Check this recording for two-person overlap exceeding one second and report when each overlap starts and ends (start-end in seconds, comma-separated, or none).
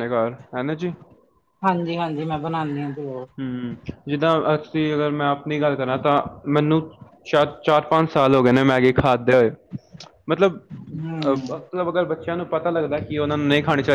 none